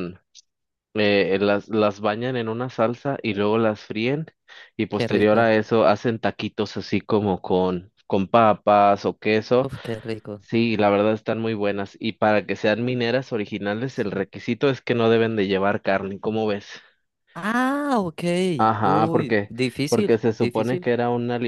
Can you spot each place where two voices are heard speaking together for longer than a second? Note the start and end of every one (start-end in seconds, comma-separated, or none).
18.8-20.9